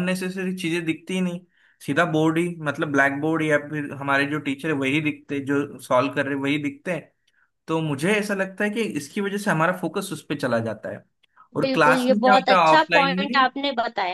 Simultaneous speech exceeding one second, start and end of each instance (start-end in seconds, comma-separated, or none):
11.6-13.5